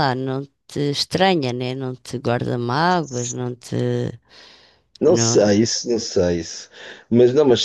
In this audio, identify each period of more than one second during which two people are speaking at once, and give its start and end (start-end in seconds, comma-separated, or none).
none